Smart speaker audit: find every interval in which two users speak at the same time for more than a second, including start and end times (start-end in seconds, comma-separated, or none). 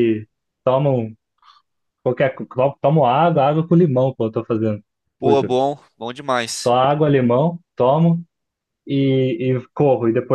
none